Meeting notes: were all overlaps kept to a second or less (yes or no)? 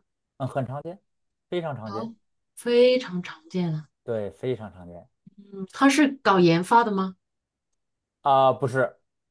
yes